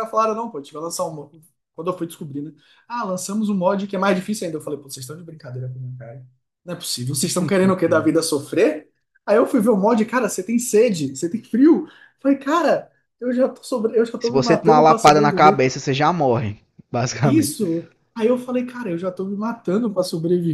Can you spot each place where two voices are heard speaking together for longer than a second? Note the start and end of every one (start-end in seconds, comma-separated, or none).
14.2-15.7